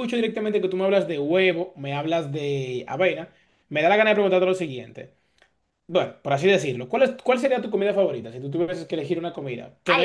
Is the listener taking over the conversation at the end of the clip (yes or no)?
yes